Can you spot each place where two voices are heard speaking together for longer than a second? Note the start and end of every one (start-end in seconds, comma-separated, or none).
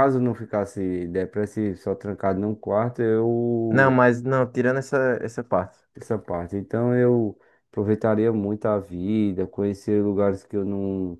none